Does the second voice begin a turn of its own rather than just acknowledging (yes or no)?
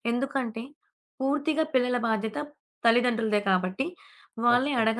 no